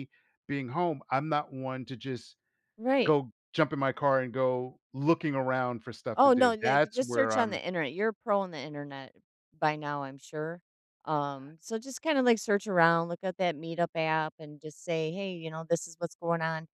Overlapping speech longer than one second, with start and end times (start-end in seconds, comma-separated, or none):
6.2-7.6